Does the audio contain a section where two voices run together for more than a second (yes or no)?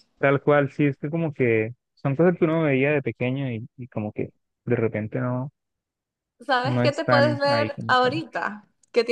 yes